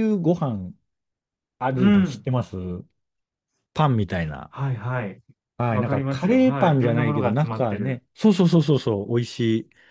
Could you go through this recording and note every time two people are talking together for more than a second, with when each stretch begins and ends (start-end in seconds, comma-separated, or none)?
5.7-8.0